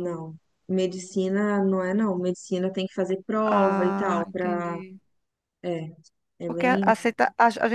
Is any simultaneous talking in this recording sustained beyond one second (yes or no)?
yes